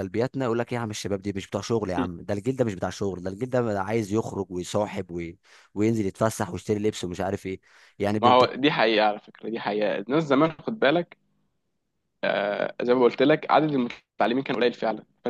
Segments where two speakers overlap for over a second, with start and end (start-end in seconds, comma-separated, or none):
none